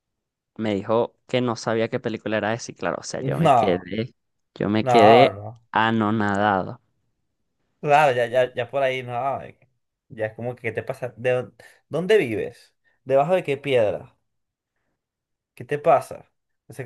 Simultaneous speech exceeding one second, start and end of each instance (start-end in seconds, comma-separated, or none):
none